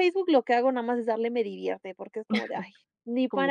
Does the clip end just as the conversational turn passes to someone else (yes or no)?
yes